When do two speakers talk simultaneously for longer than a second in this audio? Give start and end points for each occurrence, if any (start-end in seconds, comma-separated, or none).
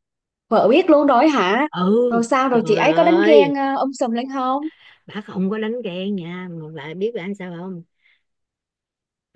2.1-3.5